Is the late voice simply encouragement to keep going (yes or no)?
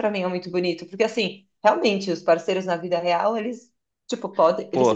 yes